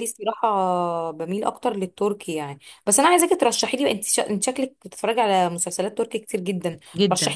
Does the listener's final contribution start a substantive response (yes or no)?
no